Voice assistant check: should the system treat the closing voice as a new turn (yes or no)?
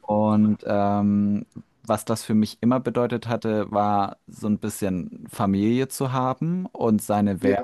no